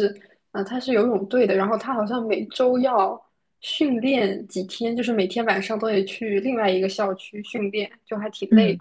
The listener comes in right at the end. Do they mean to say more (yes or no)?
yes